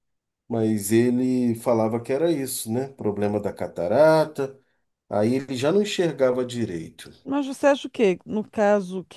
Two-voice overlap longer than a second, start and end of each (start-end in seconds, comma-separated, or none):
none